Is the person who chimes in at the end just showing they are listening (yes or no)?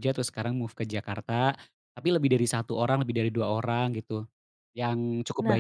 yes